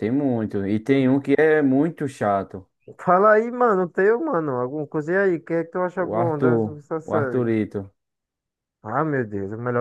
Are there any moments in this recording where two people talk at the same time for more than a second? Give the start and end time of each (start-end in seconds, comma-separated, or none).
6.0-7.5